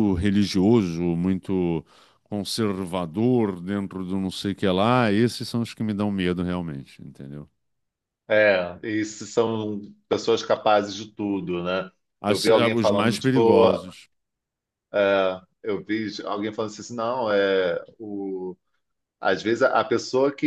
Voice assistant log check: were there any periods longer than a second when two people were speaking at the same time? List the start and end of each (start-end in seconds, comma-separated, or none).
12.3-13.7